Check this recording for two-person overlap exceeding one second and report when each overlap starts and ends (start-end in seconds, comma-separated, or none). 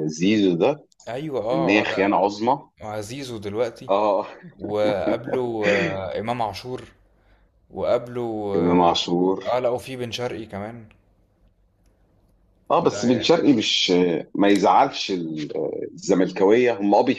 none